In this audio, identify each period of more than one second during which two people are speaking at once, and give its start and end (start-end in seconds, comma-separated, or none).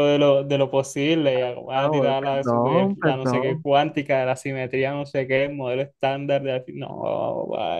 1.7-3.6